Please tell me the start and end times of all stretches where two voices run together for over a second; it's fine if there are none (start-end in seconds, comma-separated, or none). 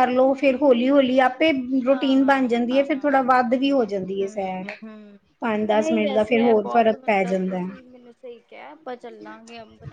1.9-3.2, 5.8-7.9